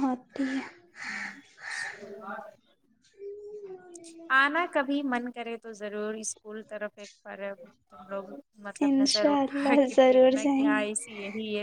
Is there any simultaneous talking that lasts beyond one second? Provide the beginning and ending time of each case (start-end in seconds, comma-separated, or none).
8.9-11.0